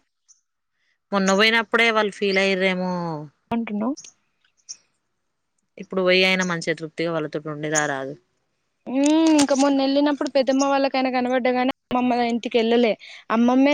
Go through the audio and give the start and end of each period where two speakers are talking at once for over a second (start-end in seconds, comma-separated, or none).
none